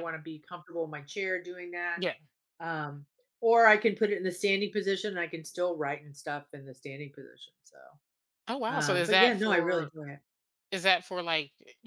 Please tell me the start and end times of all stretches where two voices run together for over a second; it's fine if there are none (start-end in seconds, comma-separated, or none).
8.7-9.9